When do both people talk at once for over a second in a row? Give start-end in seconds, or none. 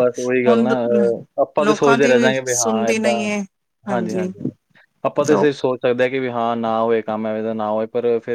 1.7-3.1